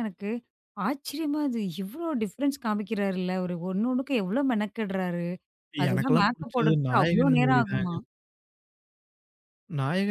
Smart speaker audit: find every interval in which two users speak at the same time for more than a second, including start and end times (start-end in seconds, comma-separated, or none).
5.9-7.9